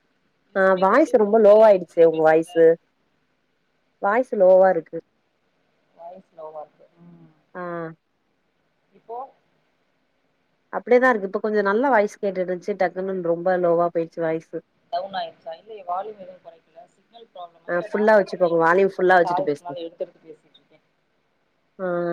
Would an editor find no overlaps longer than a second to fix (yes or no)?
no